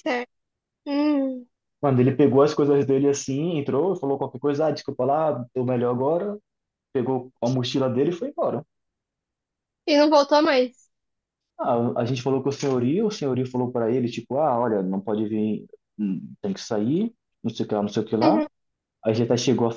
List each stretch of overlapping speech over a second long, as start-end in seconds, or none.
none